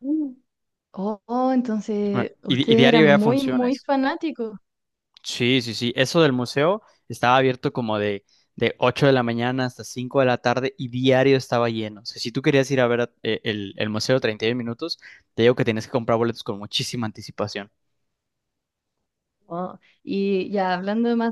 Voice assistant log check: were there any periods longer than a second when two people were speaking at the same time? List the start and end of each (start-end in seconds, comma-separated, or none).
2.1-3.9